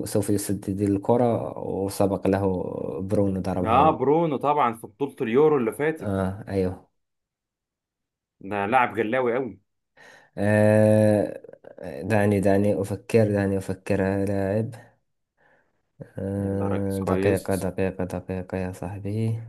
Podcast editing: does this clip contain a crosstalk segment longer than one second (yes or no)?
yes